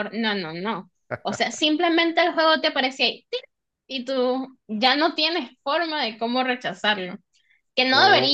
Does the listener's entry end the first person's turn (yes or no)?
no